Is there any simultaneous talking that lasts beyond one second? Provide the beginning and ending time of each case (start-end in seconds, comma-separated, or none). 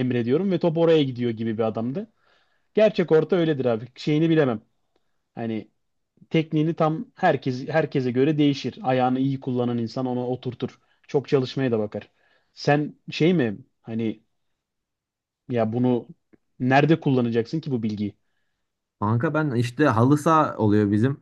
none